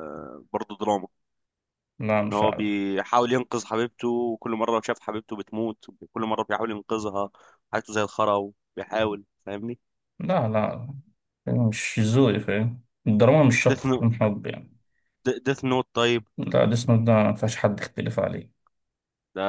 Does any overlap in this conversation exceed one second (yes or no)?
no